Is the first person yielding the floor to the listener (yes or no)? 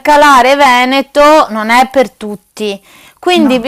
no